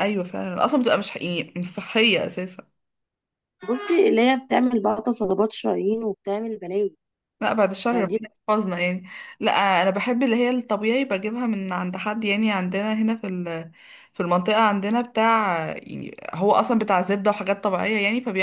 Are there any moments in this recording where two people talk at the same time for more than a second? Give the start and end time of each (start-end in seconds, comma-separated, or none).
none